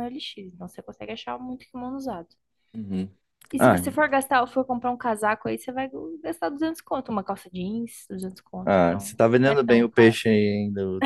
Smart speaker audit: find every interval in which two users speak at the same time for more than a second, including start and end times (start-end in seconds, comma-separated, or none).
8.7-10.2